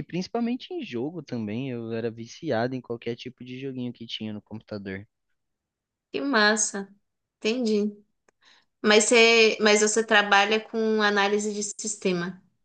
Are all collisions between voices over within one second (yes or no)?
yes